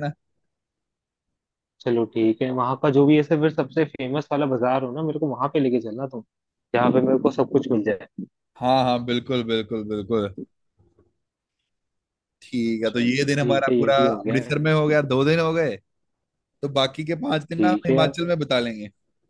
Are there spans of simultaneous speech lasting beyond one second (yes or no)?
yes